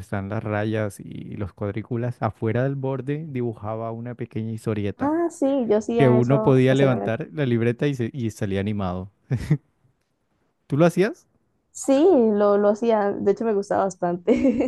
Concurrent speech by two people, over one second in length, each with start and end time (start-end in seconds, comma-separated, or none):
6.0-7.2